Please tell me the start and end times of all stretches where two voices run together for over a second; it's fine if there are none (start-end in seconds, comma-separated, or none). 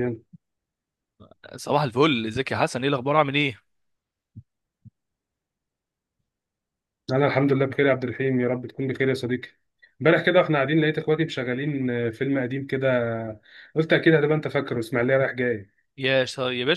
none